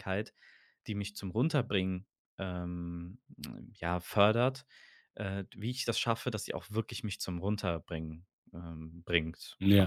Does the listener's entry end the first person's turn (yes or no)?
yes